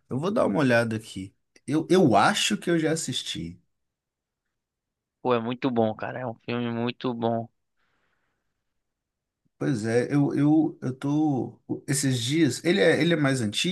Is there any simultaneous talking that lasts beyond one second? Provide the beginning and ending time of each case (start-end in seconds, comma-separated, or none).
none